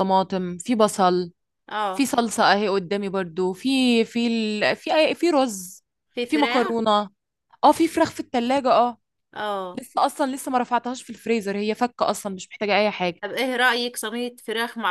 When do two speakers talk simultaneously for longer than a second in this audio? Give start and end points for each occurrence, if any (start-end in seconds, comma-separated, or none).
none